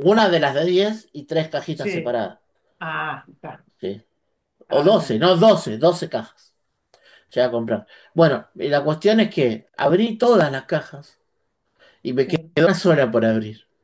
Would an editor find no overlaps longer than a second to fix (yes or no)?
yes